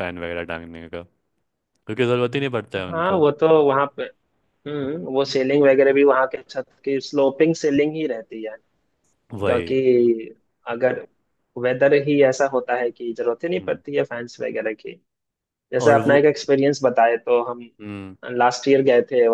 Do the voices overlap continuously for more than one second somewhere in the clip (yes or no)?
no